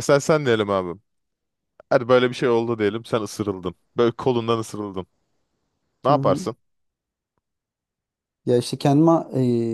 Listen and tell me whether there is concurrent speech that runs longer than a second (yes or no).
no